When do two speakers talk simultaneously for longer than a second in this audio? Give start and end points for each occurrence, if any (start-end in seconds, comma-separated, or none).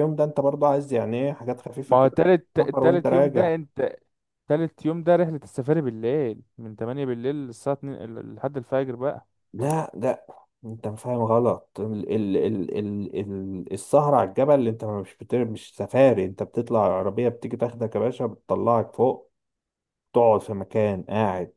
1.9-3.5